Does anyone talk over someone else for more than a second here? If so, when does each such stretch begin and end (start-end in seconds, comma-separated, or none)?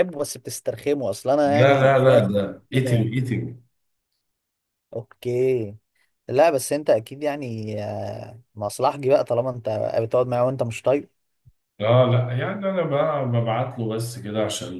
1.4-3.2